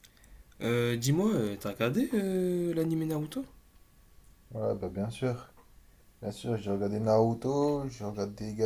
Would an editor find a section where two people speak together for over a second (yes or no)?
no